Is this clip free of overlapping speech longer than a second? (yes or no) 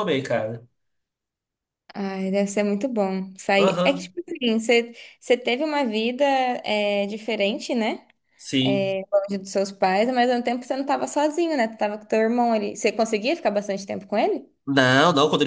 yes